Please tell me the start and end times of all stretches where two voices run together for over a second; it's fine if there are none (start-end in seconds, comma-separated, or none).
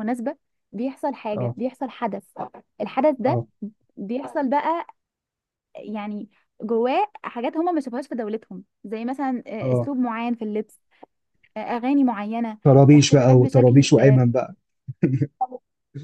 12.9-14.2